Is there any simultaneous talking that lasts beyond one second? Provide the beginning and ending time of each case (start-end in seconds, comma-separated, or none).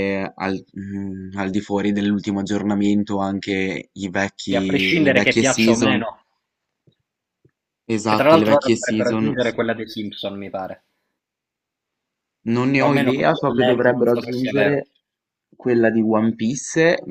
4.5-6.0, 8.0-9.6, 12.8-14.8